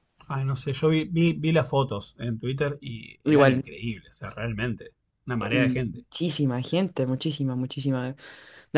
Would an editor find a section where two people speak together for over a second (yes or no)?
no